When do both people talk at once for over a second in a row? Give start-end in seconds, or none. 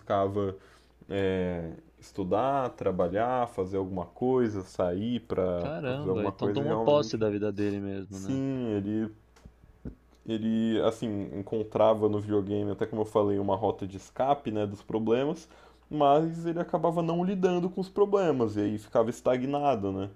5.6-7.2